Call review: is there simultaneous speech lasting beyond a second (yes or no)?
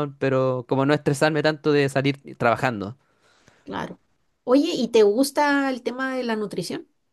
no